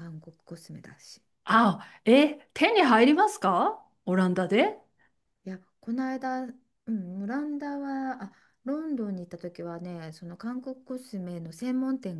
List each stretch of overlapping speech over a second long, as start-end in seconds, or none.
none